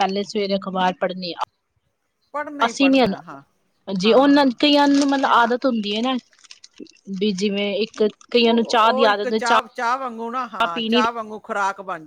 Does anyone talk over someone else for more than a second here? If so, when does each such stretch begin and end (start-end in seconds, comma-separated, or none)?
8.4-9.7